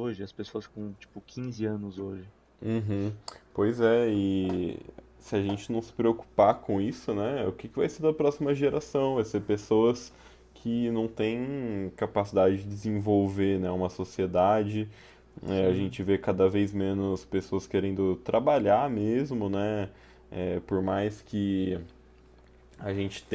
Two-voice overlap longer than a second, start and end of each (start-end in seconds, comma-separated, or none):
none